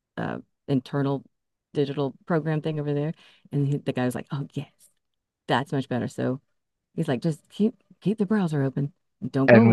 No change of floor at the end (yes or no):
no